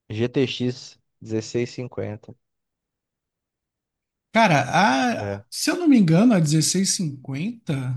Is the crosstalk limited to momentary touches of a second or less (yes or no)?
yes